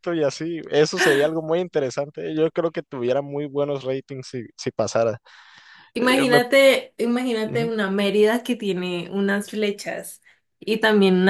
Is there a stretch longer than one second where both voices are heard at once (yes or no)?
no